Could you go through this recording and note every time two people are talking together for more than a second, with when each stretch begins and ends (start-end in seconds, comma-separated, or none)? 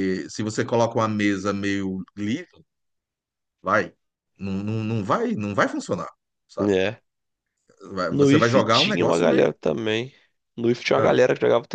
8.2-9.5